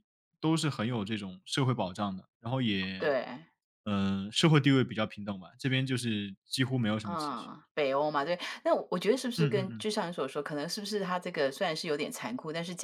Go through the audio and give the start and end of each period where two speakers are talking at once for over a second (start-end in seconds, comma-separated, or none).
none